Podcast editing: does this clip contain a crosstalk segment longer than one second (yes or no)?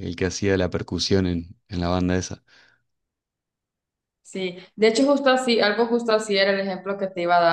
no